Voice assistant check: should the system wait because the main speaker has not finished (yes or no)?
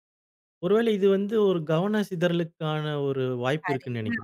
no